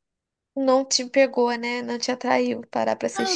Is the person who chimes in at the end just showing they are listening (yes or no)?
no